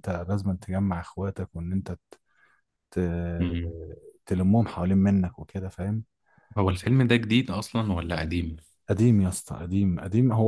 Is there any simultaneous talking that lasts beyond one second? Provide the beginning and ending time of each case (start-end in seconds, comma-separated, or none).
none